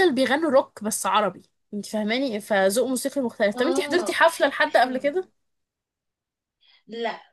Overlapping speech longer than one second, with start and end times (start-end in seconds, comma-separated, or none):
3.5-5.0